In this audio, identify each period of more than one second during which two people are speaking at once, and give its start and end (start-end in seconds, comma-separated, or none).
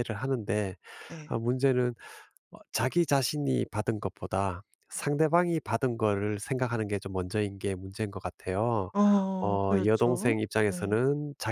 9.4-11.0